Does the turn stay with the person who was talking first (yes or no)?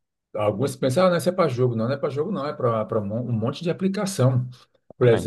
yes